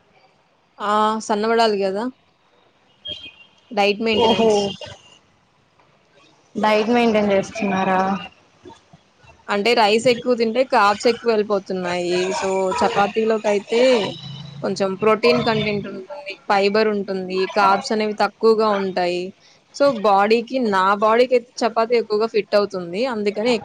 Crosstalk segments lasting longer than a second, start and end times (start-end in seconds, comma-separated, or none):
none